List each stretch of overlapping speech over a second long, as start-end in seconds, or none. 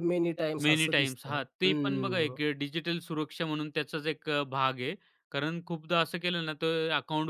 0.6-2.4